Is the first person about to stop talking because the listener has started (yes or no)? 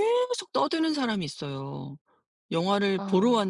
no